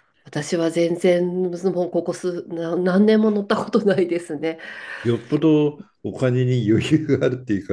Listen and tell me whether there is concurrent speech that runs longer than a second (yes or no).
no